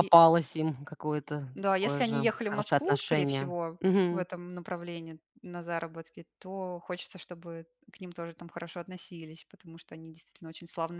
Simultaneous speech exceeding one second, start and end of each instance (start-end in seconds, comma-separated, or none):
1.6-4.2